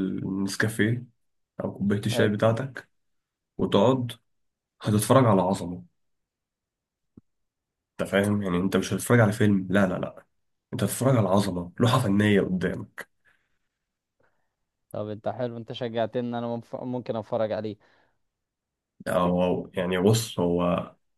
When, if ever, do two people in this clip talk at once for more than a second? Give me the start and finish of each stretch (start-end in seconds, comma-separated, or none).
none